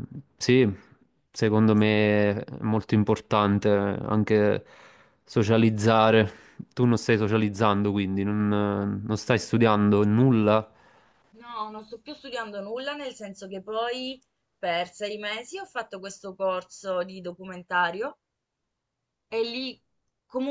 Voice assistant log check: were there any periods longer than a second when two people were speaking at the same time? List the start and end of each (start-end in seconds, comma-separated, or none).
none